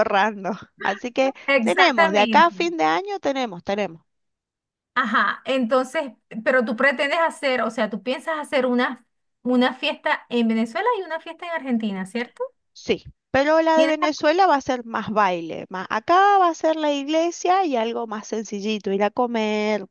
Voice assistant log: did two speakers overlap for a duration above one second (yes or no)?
yes